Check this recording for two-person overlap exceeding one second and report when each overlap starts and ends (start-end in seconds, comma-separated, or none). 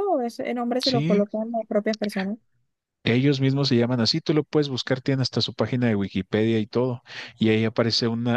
none